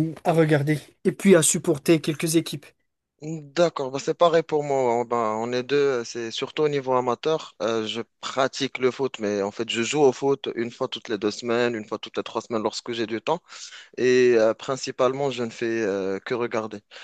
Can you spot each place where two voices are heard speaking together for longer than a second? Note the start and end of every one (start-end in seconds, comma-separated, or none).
none